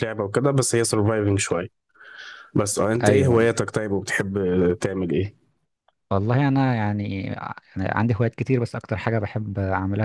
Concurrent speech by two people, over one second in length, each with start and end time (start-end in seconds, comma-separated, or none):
none